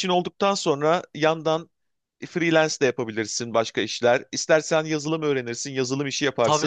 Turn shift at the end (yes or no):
yes